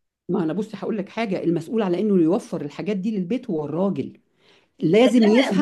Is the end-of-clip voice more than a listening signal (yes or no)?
yes